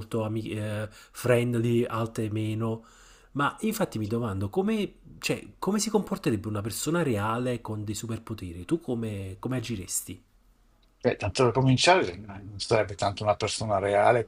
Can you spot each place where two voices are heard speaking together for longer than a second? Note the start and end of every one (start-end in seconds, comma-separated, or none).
none